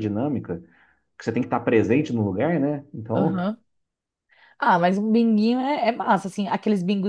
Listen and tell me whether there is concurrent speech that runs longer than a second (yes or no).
no